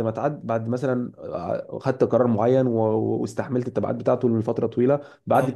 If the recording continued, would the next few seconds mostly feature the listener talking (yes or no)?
no